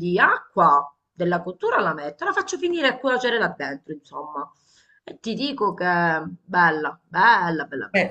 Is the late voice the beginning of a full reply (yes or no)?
yes